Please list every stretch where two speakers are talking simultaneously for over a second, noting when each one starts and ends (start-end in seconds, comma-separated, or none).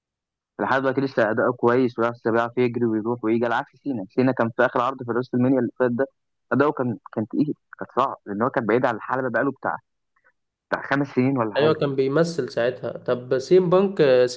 none